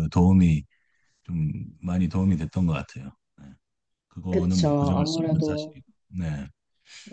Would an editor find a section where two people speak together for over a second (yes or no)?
yes